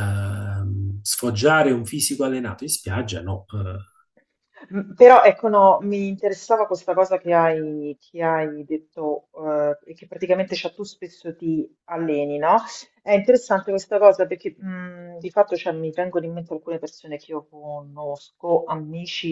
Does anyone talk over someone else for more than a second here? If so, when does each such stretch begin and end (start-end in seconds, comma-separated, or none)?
none